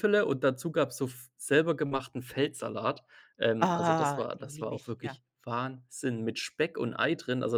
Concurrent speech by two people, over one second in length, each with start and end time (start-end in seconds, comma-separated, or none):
3.6-5.2